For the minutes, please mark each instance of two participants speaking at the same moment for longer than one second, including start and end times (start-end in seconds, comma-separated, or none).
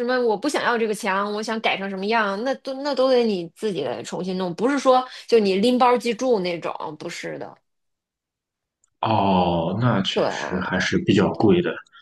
none